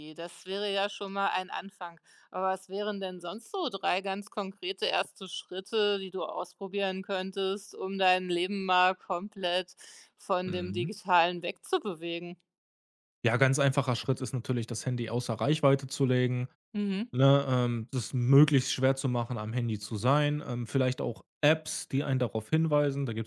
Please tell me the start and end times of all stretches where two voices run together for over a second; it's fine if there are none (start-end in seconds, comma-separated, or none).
none